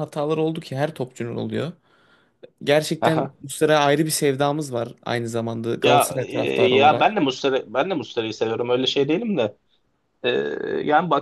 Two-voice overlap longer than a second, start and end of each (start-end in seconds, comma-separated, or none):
5.8-7.1